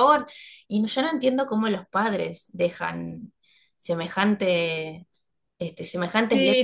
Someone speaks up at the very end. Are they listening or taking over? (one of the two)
taking over